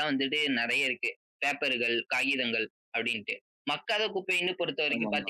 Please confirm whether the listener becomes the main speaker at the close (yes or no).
no